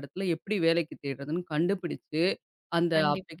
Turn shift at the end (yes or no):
no